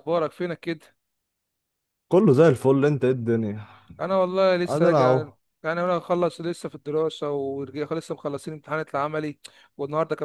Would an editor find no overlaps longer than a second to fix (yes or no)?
yes